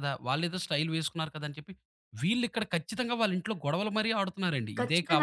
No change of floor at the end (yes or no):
no